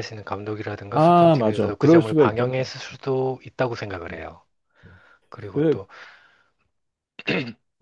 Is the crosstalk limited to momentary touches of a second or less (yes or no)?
no